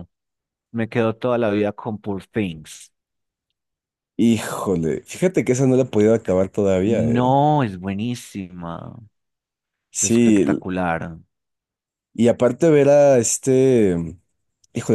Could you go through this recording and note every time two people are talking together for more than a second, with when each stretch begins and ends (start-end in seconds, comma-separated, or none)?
none